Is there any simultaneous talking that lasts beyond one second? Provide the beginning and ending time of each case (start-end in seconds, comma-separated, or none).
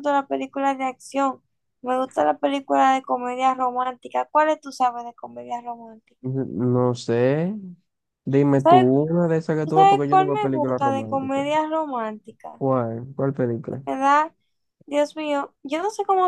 9.6-11.5